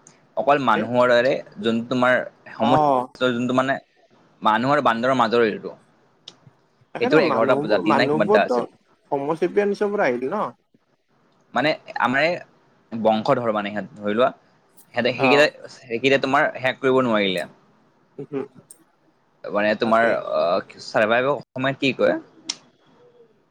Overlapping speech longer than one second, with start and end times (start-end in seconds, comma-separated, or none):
7.0-8.6